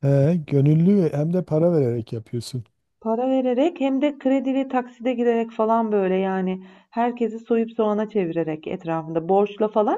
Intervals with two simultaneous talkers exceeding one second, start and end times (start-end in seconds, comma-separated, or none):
none